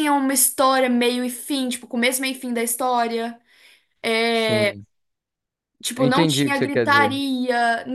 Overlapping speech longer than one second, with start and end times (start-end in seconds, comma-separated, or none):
6.0-7.2